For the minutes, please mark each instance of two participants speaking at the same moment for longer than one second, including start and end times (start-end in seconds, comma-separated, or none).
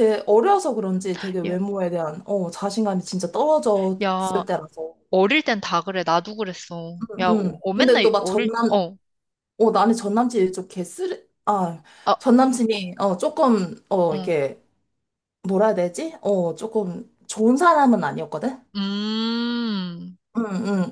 7.0-8.8